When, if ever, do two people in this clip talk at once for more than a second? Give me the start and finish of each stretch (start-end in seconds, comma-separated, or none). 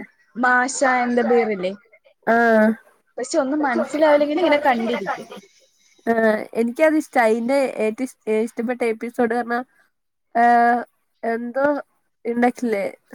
none